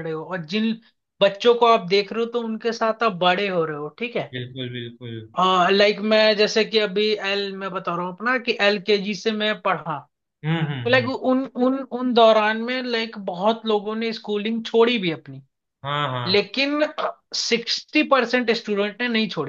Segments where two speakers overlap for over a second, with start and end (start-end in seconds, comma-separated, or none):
none